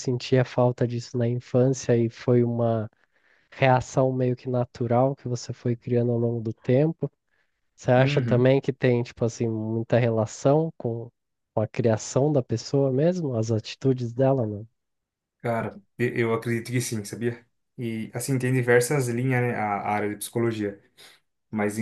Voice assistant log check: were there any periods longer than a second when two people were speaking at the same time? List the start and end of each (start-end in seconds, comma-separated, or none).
none